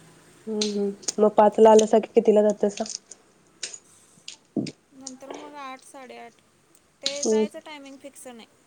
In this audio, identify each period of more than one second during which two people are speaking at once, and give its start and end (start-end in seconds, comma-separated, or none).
none